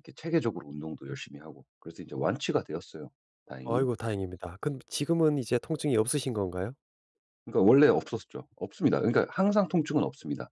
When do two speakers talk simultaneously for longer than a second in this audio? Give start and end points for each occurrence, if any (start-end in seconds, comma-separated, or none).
none